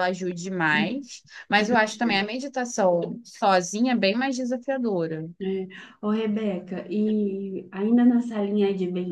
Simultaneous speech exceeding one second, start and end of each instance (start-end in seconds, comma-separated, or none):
none